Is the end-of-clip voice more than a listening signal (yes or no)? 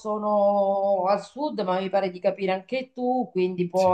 no